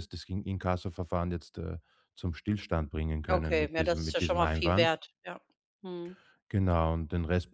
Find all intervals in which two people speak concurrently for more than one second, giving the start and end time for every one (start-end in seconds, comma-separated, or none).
3.3-4.9